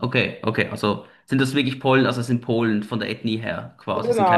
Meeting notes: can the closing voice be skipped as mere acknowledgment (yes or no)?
no